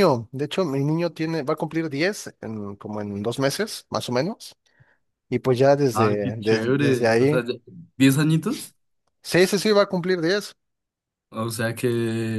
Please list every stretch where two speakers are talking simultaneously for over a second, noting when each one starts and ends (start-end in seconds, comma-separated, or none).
5.9-7.4